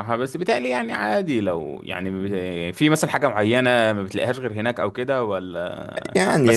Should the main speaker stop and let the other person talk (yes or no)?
yes